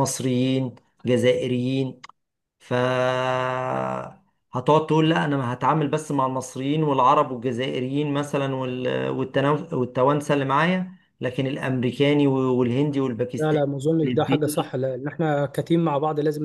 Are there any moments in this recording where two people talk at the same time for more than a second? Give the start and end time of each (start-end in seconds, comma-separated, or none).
13.4-14.8